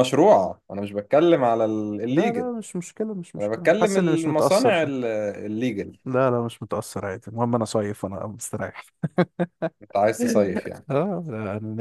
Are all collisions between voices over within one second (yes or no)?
no